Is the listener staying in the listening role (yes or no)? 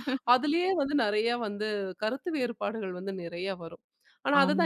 yes